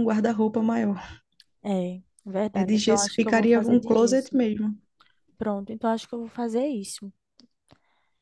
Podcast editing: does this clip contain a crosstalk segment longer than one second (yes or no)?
yes